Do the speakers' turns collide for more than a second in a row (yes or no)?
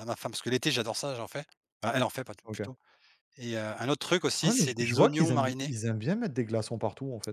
yes